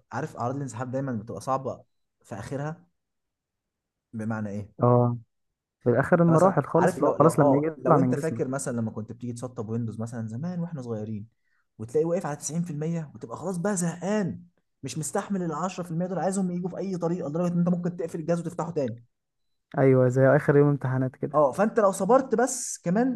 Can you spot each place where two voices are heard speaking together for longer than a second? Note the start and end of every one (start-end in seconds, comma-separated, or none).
6.1-8.6